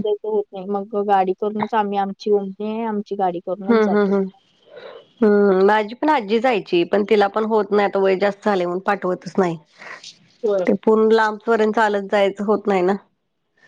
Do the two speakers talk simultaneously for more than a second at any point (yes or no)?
no